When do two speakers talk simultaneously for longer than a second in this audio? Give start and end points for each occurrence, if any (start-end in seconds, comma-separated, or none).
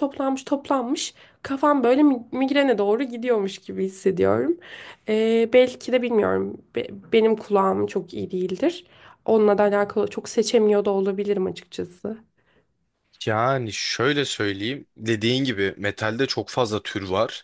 none